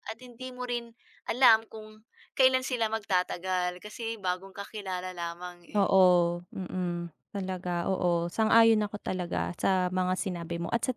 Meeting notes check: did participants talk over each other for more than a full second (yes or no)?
no